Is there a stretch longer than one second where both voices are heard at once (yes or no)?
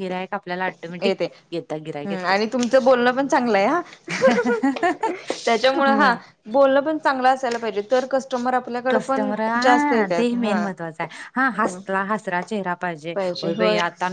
yes